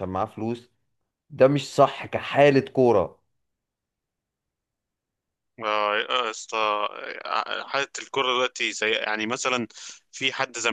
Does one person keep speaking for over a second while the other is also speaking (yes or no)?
no